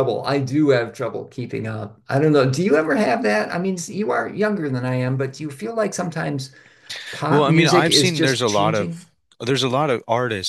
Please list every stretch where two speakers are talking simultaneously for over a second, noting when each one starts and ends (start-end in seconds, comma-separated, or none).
7.3-9.1